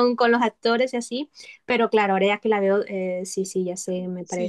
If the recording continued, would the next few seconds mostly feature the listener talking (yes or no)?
yes